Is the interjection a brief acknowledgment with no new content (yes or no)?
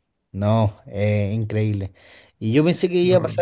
yes